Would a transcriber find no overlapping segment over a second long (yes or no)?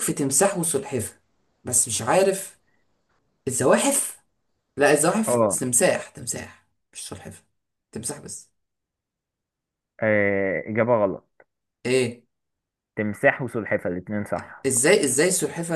yes